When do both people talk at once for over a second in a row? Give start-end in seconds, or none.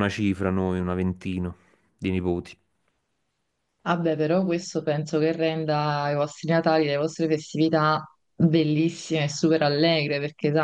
none